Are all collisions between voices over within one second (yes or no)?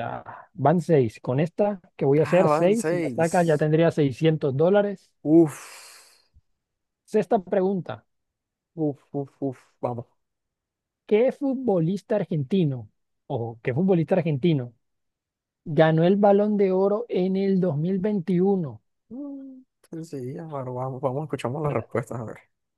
no